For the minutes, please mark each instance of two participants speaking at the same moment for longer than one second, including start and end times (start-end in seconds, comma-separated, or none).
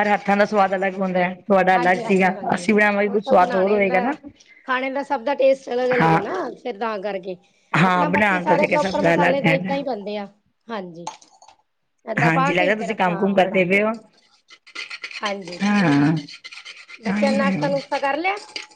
1.7-4.0, 7.9-9.8, 12.2-13.8